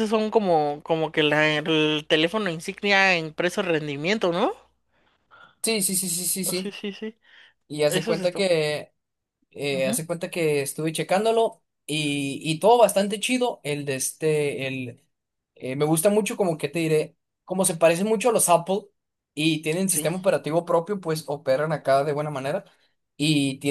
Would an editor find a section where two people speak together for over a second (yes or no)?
no